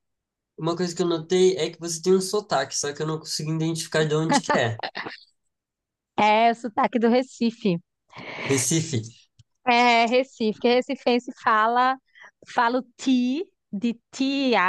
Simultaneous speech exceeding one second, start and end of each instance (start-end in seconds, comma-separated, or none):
none